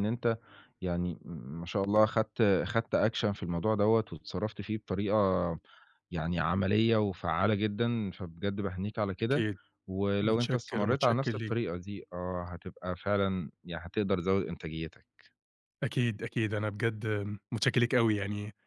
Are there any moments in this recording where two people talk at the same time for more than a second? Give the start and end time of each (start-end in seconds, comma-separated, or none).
10.2-11.6